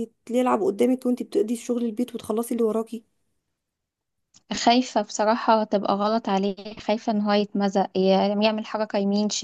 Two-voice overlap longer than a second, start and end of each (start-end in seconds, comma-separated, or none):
none